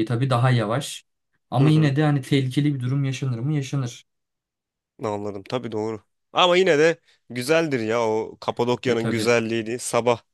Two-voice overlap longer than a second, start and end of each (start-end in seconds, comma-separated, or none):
none